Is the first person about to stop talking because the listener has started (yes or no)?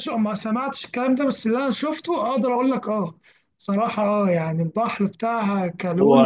no